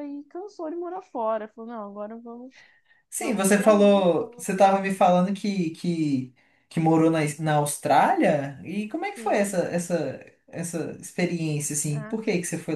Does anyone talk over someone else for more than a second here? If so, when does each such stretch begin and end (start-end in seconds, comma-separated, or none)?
3.2-4.7